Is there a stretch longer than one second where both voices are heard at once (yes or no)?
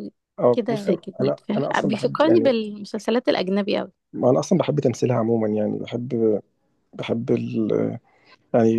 yes